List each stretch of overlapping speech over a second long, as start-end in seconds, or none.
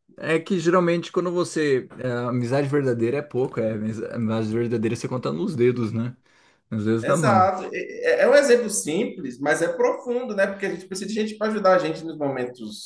none